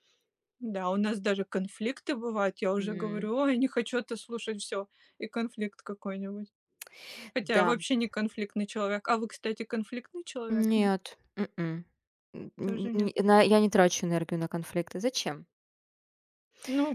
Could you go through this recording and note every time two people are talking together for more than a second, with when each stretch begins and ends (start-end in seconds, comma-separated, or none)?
none